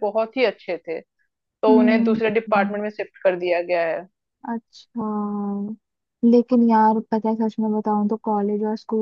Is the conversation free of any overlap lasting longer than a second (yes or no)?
yes